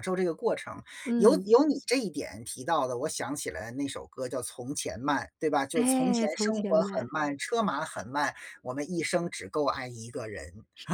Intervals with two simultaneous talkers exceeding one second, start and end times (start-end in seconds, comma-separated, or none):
5.7-7.1